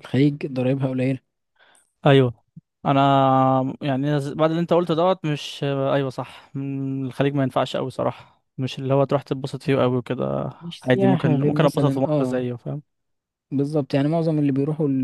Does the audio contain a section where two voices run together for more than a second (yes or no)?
yes